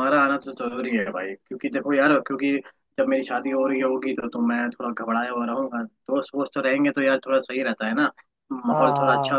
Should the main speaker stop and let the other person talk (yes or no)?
no